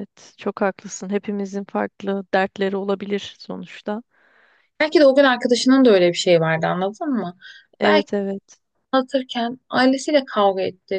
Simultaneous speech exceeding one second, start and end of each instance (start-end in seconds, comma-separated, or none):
none